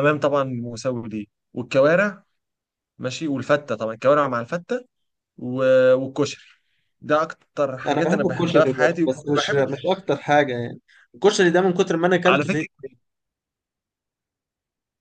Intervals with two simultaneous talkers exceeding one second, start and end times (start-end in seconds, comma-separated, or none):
7.9-9.7